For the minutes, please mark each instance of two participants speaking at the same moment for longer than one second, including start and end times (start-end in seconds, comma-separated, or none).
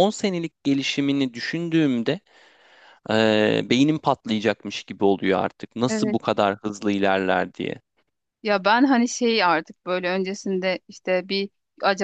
none